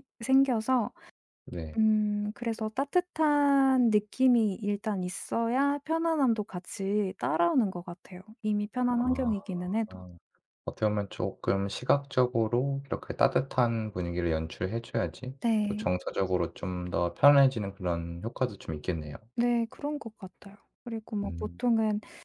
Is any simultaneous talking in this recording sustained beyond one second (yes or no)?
no